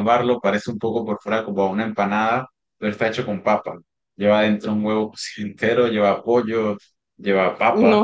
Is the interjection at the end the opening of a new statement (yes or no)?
yes